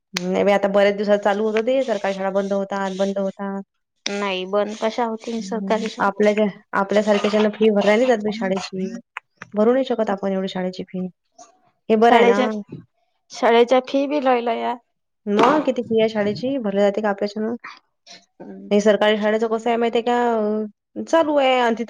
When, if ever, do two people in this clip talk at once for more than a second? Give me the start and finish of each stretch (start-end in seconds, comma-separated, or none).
none